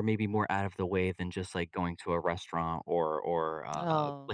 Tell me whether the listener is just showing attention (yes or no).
yes